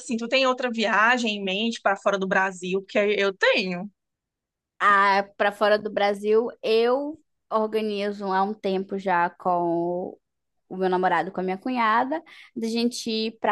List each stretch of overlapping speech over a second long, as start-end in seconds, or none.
none